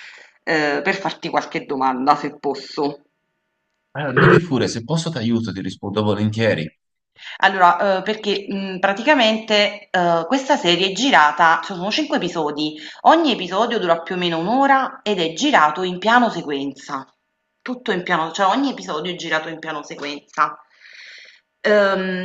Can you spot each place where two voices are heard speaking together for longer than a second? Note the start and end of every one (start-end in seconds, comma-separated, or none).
none